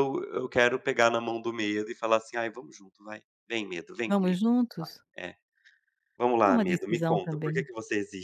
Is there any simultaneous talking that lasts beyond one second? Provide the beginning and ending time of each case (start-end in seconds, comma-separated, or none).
6.4-7.7